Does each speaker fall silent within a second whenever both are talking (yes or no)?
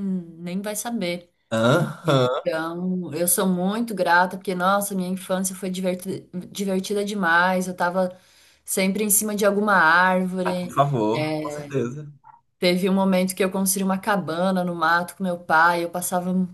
yes